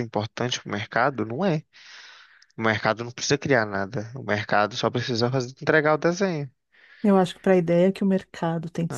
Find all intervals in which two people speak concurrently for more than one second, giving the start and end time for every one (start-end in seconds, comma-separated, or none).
none